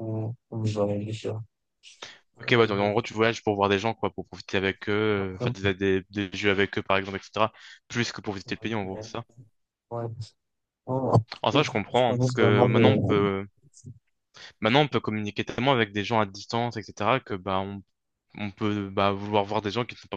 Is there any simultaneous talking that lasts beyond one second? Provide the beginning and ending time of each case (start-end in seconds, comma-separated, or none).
11.5-12.8